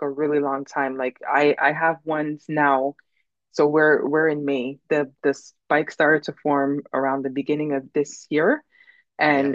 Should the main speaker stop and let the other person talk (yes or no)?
no